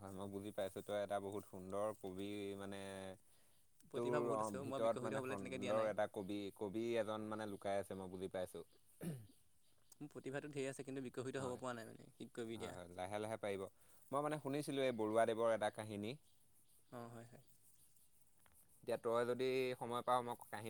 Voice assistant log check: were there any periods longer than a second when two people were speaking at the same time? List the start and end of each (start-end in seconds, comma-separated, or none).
4.0-5.9